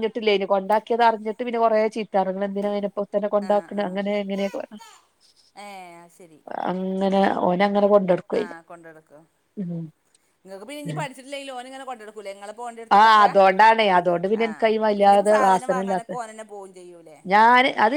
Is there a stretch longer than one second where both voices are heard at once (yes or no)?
yes